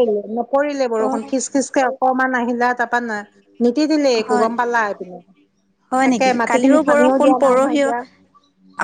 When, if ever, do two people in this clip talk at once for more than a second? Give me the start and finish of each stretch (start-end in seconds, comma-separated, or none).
6.1-7.9